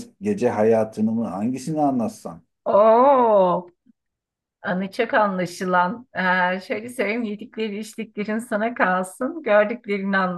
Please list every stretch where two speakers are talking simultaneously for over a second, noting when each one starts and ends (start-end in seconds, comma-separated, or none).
none